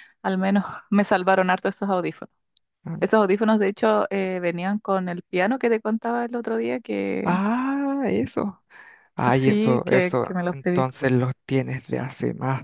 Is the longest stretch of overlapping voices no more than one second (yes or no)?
no